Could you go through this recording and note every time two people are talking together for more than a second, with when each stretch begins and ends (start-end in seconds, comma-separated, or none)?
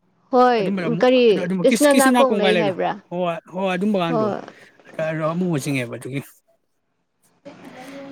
0.6-2.7